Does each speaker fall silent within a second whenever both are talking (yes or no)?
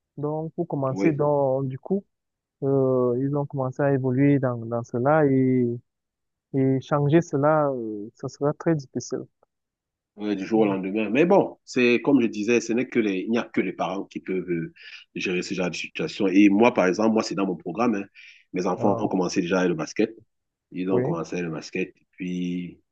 yes